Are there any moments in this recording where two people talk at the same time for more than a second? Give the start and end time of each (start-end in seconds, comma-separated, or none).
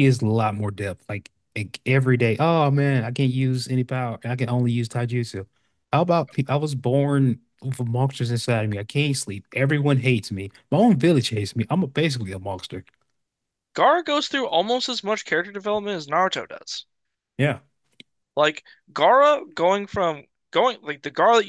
none